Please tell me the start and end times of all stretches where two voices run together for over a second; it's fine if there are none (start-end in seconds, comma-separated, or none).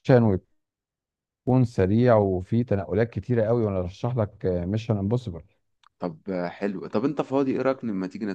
none